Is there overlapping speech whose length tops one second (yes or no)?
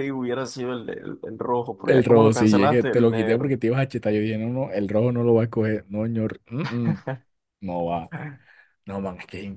yes